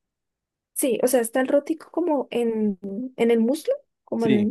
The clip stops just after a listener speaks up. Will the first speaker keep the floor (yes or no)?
no